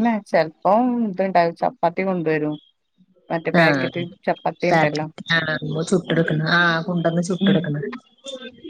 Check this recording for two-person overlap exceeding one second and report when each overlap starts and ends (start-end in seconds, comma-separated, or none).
none